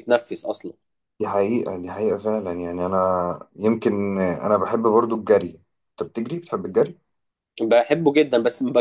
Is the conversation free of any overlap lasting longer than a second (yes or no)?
yes